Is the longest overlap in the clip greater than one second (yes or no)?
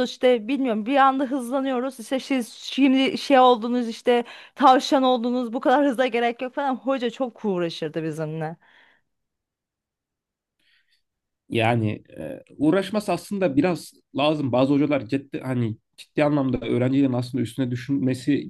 no